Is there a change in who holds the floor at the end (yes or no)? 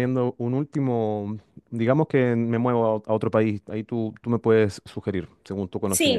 yes